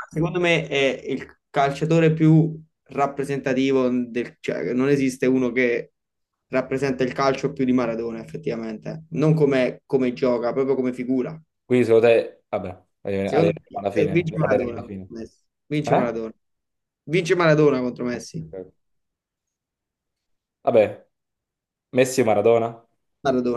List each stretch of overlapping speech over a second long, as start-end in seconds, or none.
13.2-15.1